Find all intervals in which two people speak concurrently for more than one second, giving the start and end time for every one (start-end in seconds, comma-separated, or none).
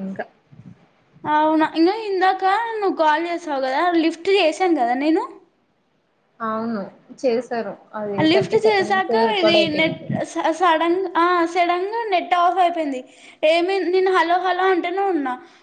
8.3-10.1